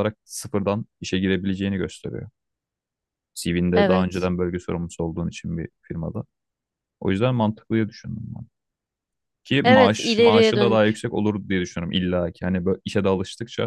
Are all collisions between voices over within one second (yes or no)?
no